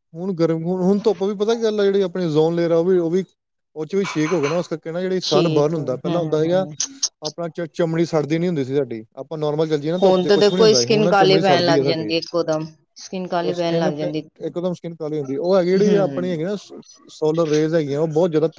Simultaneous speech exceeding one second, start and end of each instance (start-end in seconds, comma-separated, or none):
5.3-6.7, 10.0-12.1